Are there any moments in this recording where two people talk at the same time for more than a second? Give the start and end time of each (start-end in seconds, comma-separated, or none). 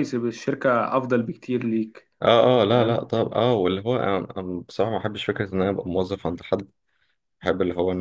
none